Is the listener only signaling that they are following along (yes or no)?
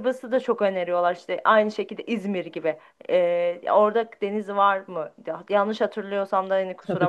no